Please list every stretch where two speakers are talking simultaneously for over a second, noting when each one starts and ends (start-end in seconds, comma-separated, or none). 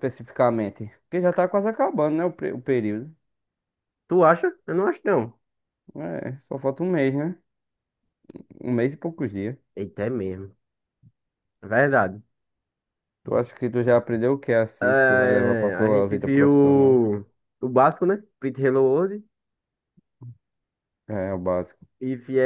14.8-17.0